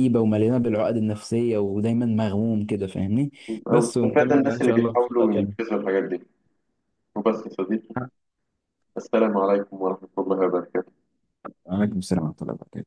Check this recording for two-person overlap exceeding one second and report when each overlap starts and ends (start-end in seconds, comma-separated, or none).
3.7-5.5